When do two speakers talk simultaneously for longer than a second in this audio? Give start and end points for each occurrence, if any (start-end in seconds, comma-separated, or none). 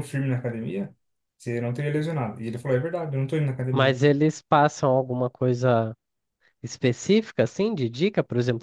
none